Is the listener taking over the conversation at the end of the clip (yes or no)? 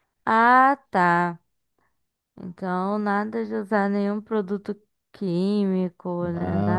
yes